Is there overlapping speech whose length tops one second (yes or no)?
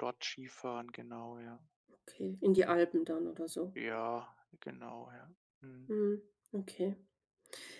no